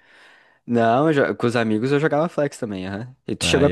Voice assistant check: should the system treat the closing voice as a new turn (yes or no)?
yes